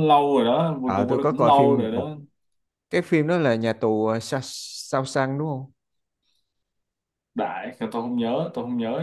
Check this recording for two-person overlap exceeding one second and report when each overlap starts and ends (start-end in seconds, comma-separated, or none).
0.8-2.1